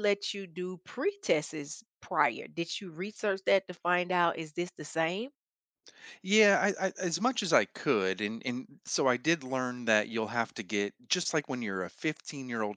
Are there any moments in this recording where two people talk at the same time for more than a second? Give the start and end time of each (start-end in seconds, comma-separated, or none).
none